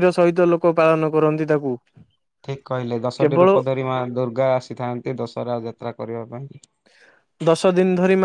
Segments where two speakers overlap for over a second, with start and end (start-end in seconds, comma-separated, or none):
none